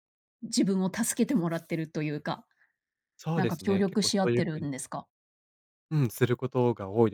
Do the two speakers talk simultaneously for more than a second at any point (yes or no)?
yes